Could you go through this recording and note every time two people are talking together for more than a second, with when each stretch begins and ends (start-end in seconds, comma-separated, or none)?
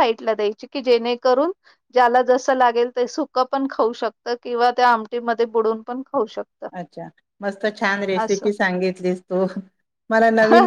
none